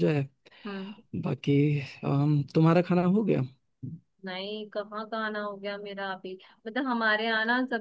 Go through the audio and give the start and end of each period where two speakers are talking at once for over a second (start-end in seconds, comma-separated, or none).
none